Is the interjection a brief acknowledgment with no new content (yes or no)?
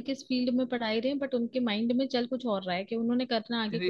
no